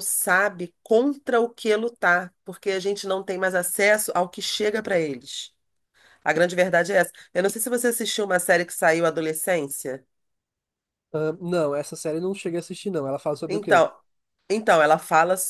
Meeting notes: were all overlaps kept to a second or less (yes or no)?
yes